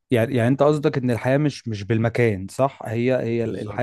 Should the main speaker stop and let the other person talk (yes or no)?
no